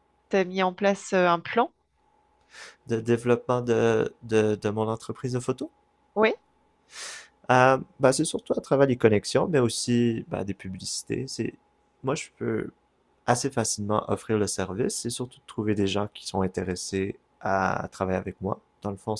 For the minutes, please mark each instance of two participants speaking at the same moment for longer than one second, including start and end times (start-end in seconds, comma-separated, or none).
none